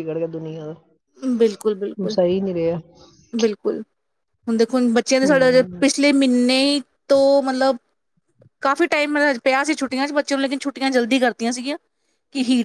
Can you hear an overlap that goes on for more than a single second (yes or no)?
no